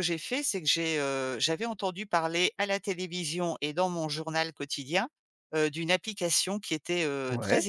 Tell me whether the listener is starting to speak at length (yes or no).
no